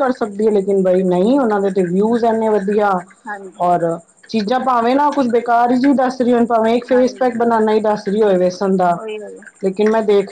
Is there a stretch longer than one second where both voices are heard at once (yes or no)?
no